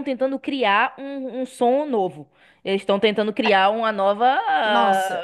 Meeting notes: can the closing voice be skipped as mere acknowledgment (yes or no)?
no